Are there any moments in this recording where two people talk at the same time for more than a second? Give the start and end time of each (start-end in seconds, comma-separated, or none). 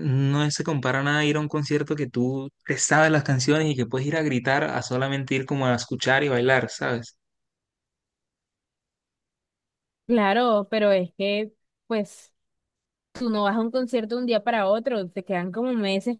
none